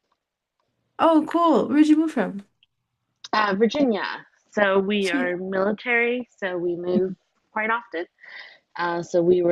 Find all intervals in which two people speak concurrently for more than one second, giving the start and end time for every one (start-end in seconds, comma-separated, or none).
none